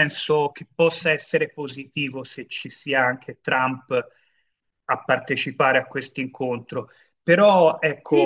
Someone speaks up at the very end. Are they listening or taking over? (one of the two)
taking over